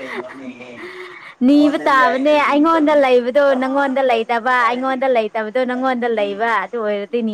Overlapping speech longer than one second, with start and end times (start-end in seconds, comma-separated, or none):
1.5-5.0